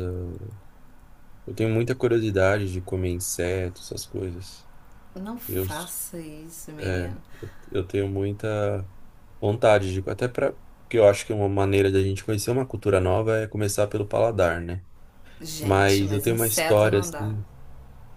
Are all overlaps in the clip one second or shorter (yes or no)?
no